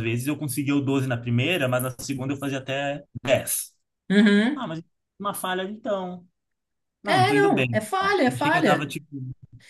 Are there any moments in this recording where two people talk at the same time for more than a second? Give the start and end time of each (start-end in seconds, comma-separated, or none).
7.0-9.0